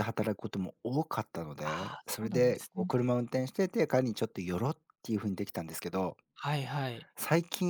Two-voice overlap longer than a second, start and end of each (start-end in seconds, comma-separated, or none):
1.6-2.9